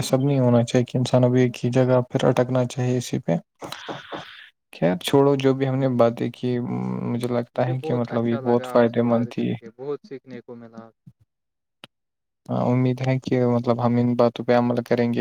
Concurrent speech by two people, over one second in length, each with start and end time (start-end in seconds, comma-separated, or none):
7.5-9.5